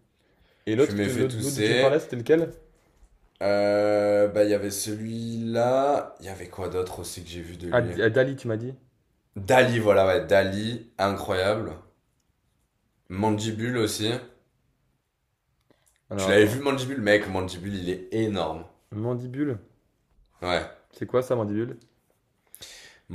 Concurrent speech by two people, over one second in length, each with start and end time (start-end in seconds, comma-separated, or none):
0.8-2.0